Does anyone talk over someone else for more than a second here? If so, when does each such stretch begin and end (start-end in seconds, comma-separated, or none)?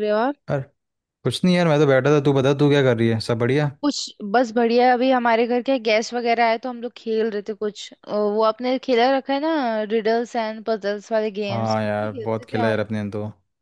11.5-12.9